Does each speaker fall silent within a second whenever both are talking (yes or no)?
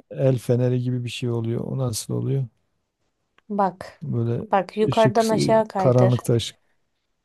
no